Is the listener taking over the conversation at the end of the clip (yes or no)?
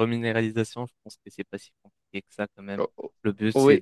no